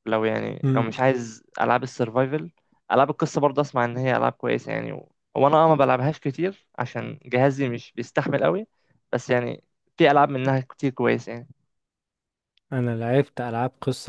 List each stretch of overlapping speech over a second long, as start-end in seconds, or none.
none